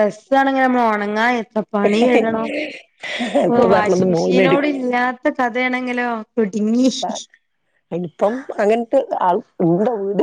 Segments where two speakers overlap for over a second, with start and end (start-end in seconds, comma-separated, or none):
3.5-4.8